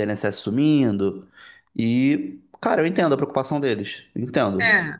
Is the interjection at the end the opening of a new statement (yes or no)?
yes